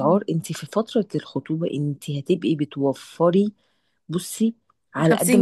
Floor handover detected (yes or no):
no